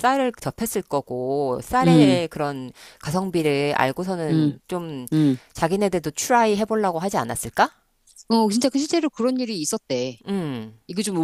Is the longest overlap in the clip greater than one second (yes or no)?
no